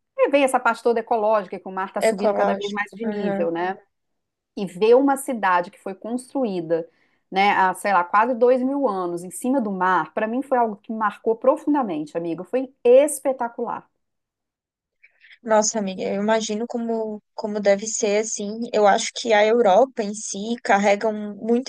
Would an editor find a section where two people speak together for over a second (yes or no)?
yes